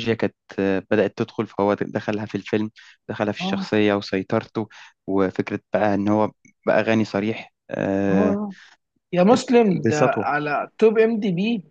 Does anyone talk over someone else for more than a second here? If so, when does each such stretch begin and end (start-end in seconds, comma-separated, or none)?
none